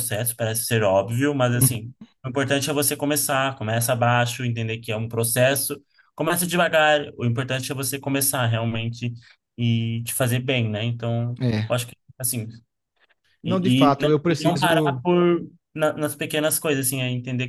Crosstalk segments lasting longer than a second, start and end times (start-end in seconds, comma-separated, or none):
13.4-15.0